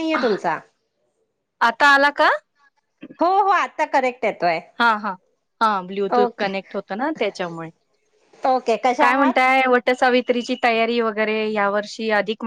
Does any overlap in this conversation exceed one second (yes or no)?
no